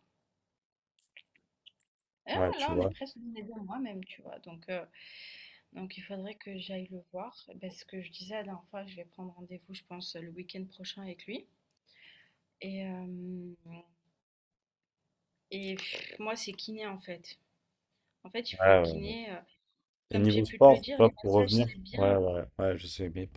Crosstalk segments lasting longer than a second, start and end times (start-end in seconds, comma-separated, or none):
20.1-22.2